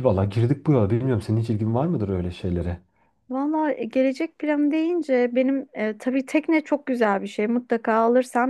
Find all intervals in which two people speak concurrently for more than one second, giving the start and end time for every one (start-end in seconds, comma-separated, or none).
none